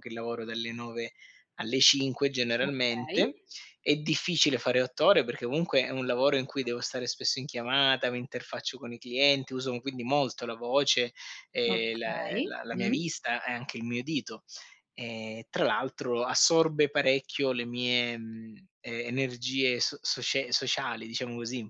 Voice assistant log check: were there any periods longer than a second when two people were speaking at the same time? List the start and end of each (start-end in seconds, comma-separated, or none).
11.7-13.0